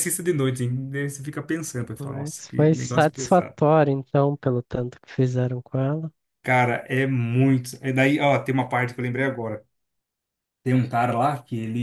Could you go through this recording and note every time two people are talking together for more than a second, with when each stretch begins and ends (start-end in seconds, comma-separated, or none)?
2.0-3.5